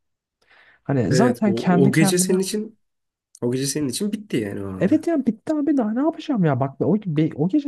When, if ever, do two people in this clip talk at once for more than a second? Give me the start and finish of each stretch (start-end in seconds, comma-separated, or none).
1.1-2.4